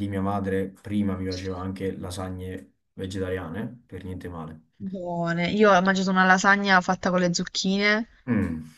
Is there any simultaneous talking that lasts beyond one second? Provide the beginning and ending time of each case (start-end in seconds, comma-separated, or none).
none